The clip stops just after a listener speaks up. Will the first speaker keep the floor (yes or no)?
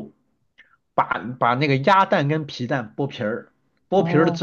yes